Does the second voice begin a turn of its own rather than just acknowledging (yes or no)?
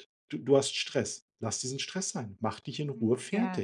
yes